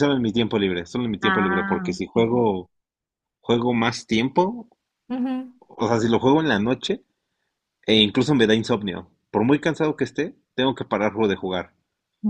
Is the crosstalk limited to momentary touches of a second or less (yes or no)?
no